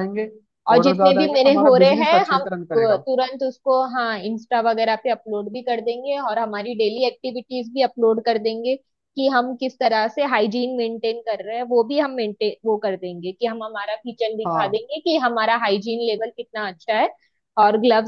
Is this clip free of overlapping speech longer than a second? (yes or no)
no